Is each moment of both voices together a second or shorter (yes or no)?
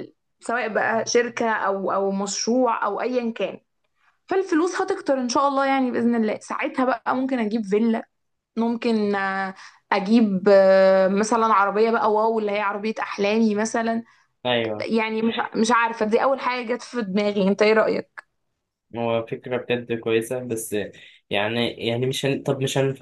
yes